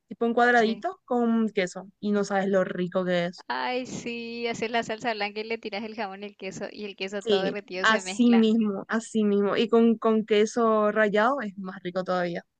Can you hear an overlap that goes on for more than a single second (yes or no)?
yes